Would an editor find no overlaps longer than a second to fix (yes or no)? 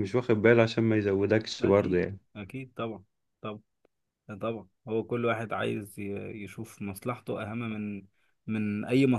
yes